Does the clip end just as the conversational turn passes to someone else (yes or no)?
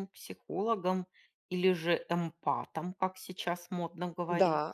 yes